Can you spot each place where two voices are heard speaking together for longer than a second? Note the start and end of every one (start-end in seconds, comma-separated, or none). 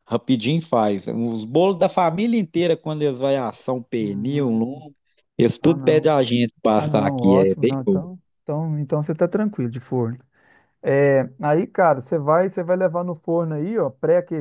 6.7-8.0